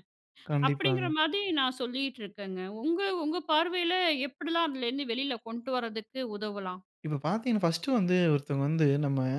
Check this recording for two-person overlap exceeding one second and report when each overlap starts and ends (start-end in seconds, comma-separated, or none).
none